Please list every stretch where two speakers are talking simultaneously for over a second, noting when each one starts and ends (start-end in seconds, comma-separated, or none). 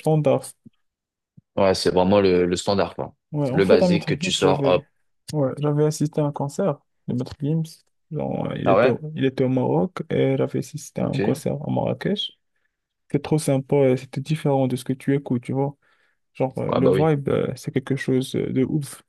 3.5-4.8